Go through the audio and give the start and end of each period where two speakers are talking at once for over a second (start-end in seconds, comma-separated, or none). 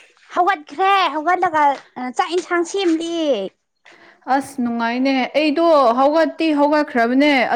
none